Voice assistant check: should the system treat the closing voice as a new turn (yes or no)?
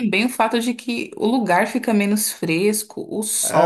yes